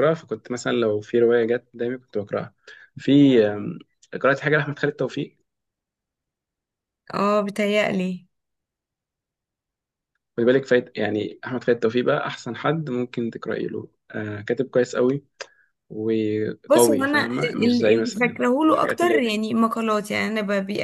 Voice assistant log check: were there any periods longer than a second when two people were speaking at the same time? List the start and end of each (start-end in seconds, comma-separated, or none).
16.7-19.2